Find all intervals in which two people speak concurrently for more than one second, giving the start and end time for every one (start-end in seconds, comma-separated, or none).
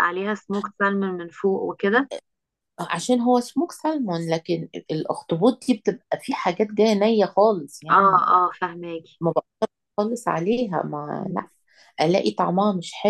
none